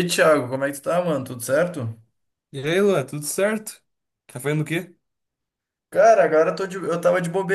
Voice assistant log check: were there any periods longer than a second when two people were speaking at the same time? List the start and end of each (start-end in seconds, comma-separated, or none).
none